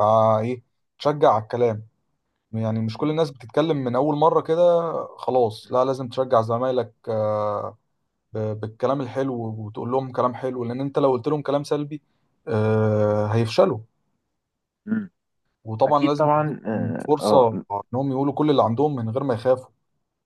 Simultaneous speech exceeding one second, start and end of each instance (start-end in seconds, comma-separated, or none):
15.9-17.6